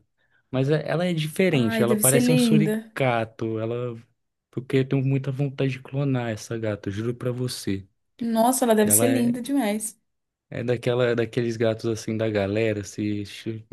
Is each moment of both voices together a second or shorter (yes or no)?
no